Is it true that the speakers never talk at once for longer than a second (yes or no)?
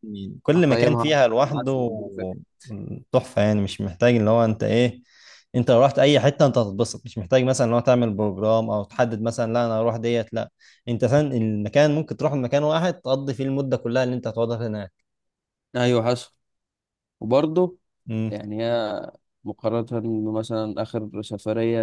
no